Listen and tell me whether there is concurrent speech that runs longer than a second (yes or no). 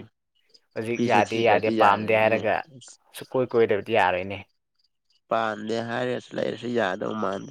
yes